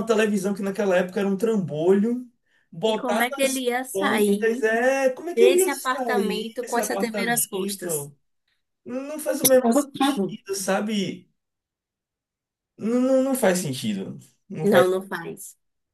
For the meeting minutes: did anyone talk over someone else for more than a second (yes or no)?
yes